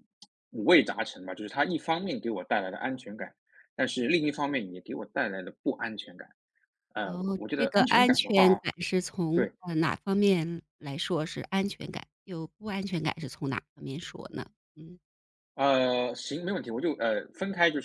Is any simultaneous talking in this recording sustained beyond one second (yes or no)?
yes